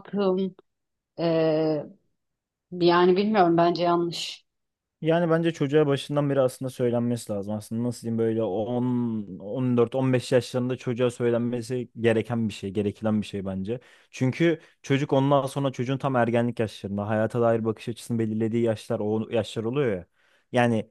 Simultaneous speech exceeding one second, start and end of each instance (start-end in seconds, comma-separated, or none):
none